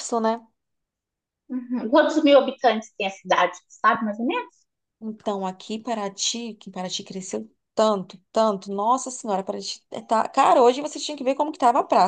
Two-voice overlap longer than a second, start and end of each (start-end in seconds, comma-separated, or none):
none